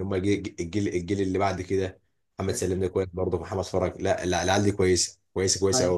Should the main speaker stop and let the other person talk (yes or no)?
yes